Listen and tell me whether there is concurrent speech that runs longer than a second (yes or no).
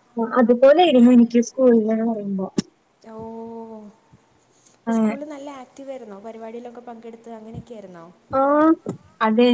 no